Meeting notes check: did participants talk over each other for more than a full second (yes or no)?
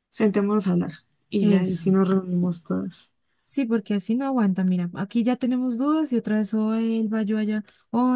no